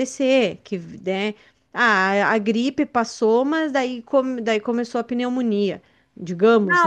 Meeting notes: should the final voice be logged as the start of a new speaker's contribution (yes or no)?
yes